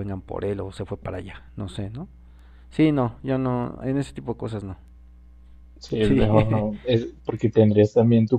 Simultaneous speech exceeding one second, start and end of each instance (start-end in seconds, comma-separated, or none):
none